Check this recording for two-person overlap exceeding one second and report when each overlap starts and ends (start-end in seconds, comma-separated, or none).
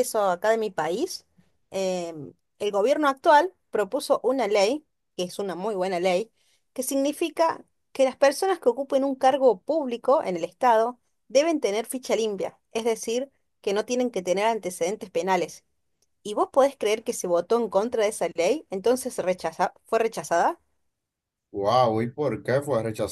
none